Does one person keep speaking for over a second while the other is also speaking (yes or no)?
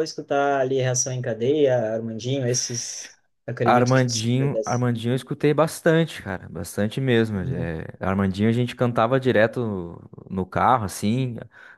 yes